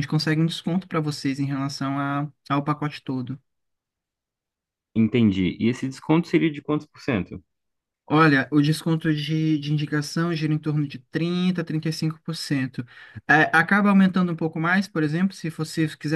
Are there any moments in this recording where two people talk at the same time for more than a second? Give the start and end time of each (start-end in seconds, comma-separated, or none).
none